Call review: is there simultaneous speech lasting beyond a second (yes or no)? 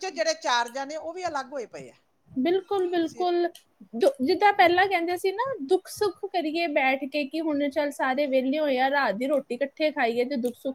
no